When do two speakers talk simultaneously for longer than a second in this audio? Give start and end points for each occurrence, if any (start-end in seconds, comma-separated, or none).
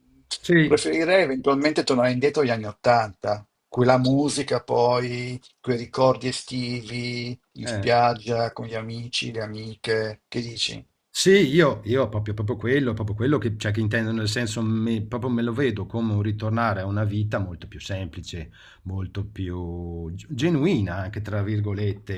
none